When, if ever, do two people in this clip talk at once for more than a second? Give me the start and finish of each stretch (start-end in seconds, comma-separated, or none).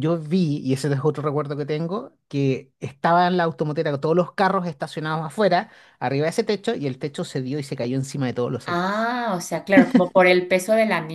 none